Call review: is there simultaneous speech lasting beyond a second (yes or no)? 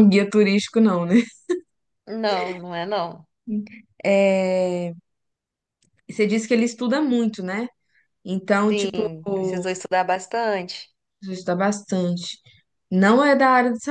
no